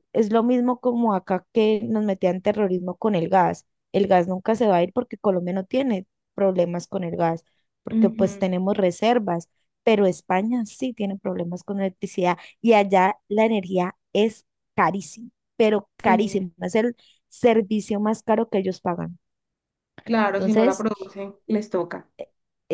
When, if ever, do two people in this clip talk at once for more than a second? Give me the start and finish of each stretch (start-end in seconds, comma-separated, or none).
none